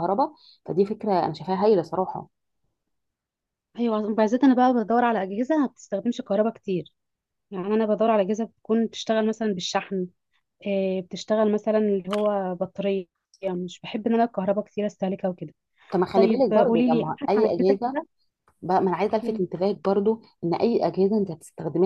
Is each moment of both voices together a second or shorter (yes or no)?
no